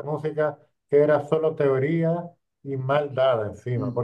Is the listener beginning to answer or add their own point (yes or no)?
no